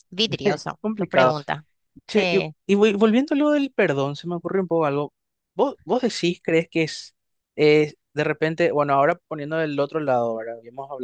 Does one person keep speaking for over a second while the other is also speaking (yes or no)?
no